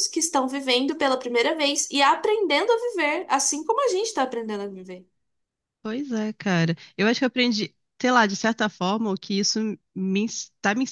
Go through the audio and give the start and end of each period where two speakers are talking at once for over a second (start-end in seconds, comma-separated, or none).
none